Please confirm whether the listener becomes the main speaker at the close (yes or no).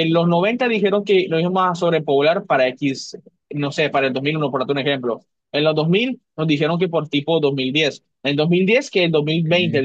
no